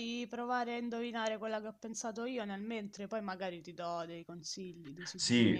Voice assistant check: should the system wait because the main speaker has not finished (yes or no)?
no